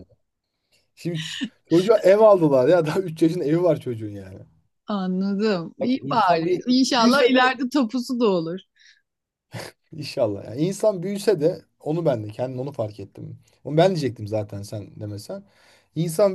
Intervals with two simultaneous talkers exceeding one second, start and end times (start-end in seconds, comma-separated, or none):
5.8-7.4